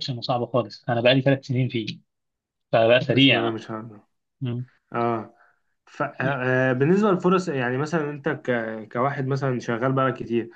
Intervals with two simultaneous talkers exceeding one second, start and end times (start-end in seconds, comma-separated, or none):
none